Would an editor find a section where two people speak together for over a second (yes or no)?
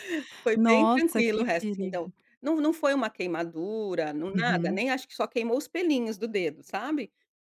yes